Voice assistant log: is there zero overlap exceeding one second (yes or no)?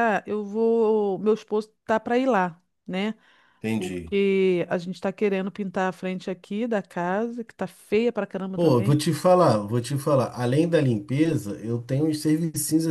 yes